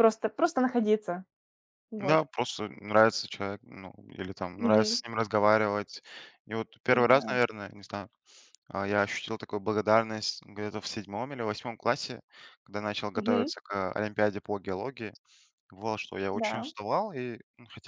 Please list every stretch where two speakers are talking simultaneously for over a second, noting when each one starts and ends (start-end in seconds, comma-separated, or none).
none